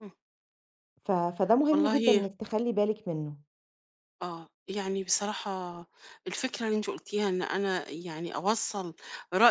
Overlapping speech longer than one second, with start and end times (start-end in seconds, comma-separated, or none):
none